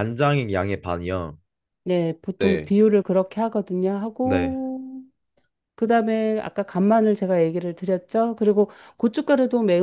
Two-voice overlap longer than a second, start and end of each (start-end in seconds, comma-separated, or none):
none